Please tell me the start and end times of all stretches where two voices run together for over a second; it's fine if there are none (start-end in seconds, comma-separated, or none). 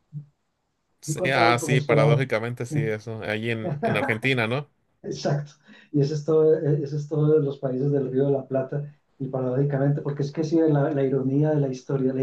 1.1-2.3